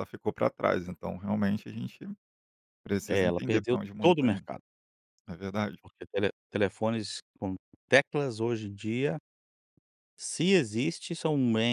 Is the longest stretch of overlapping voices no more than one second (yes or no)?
no